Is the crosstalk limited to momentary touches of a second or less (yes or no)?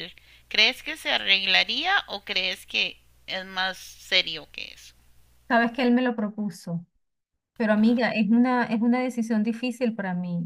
yes